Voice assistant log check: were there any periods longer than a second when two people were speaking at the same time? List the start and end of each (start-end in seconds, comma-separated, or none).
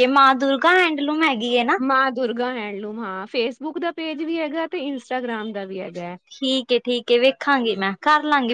none